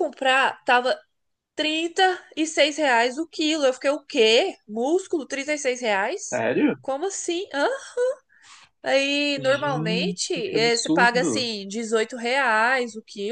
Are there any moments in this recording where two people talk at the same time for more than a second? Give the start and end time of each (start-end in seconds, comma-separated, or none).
9.3-11.5